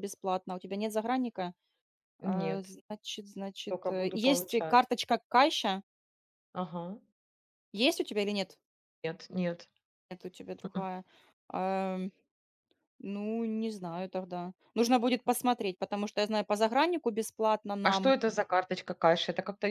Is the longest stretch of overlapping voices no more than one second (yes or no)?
no